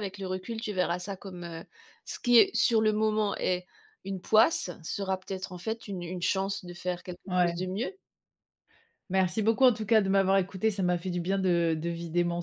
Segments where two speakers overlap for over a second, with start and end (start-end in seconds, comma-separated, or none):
none